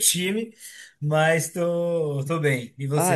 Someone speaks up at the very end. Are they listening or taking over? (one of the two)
taking over